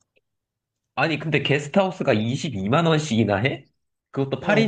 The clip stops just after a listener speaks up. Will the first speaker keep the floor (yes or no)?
no